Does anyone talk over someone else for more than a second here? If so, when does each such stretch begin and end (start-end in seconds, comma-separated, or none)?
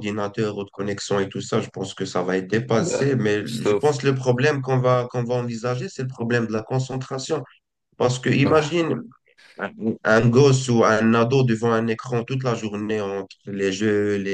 2.7-4.0